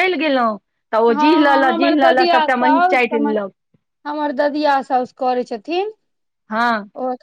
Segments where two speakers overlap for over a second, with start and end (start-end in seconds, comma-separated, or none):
1.2-3.3